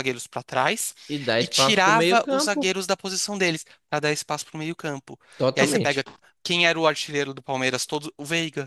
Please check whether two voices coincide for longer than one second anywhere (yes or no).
yes